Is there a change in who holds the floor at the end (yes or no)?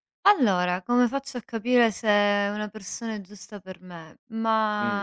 no